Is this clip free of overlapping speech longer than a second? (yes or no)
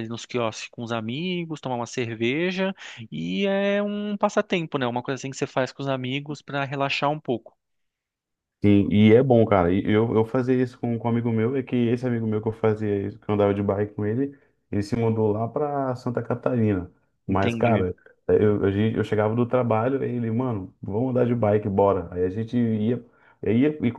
yes